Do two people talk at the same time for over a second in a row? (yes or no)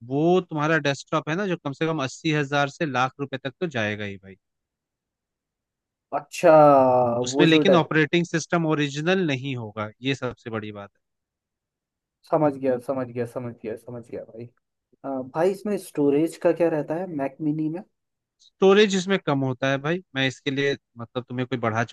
no